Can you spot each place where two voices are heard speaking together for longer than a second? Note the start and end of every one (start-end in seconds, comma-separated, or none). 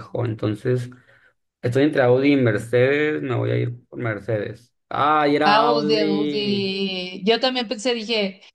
5.4-6.7